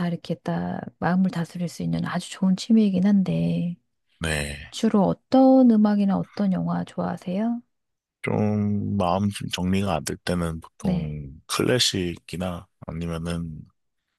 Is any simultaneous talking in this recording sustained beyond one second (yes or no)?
no